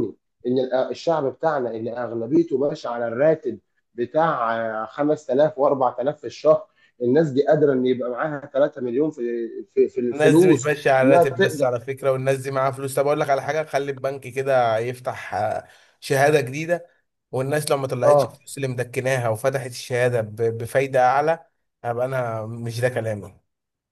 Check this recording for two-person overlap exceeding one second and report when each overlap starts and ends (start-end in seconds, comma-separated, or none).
10.1-11.7